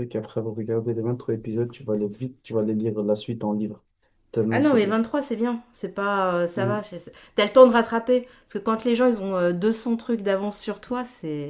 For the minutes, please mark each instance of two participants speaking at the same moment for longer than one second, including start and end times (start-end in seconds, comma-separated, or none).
none